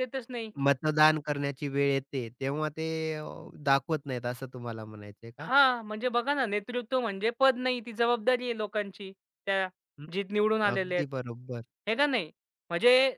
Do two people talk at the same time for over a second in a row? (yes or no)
no